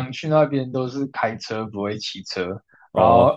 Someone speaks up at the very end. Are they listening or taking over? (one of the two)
listening